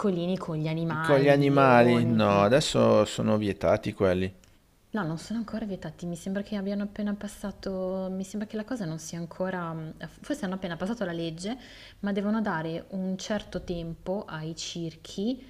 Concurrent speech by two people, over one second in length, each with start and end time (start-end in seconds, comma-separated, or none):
1.0-2.4